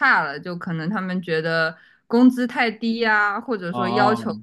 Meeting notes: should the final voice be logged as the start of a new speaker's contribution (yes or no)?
no